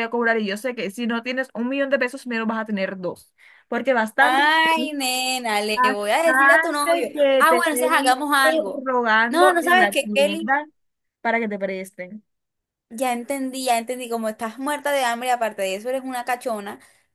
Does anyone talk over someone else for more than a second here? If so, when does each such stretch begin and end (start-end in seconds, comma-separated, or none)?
5.7-8.5, 9.3-10.6